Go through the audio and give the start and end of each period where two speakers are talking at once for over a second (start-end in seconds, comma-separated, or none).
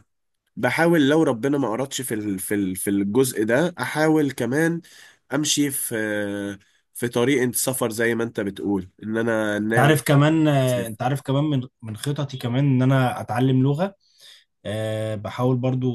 none